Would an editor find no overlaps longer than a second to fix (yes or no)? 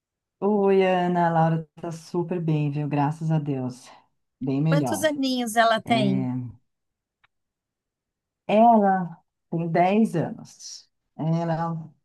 yes